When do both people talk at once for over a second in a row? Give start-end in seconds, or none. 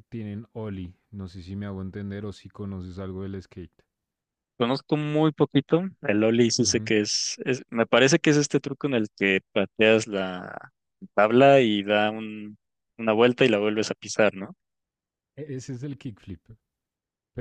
none